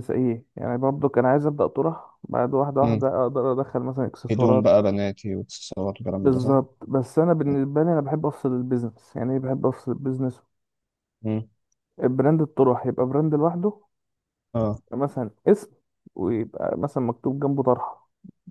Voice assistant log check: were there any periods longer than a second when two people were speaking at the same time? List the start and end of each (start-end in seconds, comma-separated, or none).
none